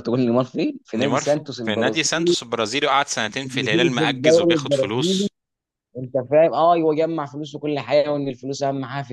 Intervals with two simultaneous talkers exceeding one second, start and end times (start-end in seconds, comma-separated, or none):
0.9-2.3, 3.2-5.3